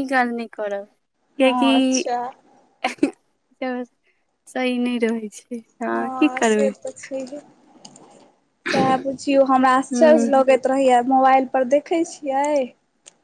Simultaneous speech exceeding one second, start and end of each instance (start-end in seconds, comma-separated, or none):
none